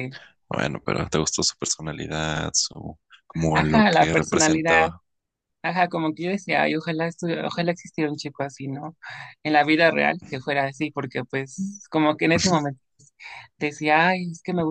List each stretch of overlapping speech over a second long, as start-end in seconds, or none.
3.5-4.9